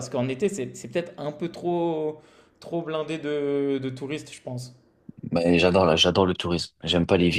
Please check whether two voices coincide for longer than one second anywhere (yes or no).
no